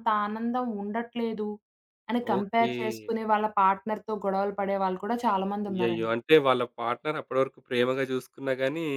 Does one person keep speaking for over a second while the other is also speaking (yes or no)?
no